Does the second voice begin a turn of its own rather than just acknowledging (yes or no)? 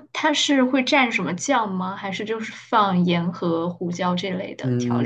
yes